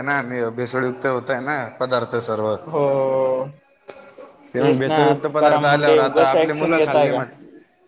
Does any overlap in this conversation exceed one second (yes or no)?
yes